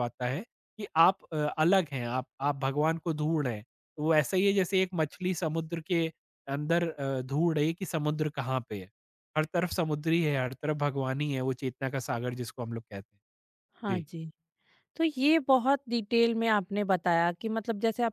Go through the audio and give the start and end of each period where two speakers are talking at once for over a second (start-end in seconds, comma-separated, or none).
none